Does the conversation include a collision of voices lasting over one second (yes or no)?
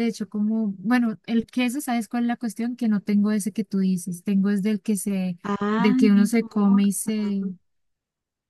yes